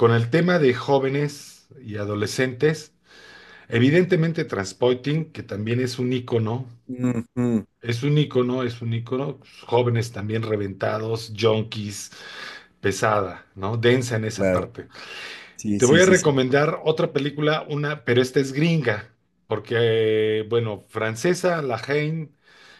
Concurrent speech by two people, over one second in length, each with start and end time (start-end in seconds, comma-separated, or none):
none